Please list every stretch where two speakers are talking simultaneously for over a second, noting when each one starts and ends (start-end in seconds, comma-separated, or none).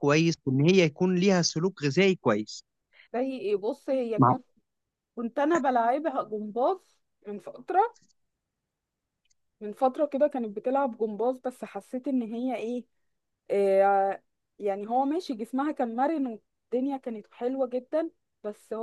none